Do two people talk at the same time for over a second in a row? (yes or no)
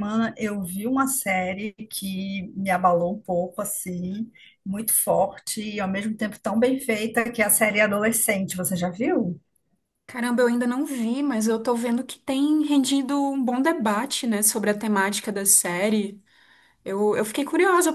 no